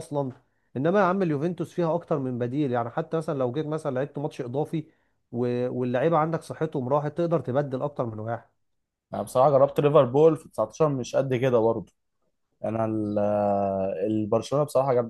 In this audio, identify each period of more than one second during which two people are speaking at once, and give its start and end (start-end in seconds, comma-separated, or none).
none